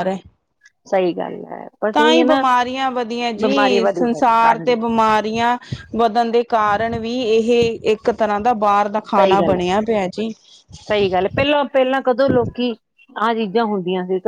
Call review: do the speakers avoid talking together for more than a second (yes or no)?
no